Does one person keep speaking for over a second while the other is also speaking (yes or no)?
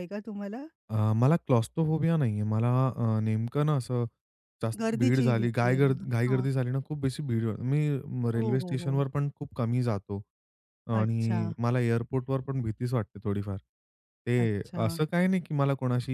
yes